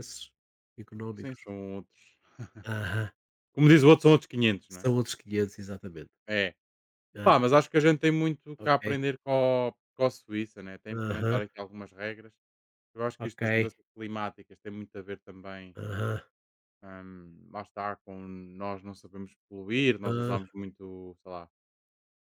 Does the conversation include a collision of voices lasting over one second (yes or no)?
no